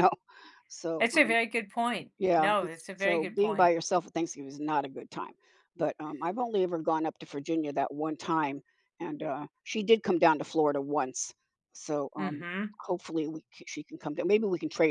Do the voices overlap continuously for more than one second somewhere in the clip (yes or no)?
yes